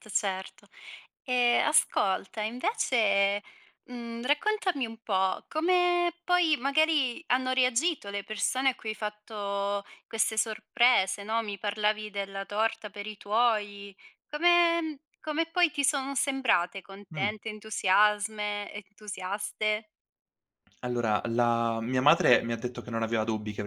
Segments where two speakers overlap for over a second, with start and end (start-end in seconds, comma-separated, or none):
none